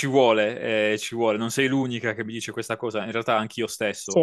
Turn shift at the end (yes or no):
no